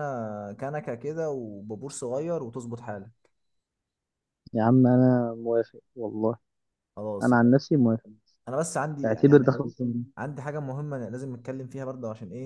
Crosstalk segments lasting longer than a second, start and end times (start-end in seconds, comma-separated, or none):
none